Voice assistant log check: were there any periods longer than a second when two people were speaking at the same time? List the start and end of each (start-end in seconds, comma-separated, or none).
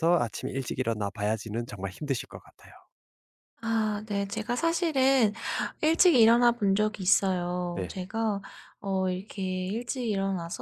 none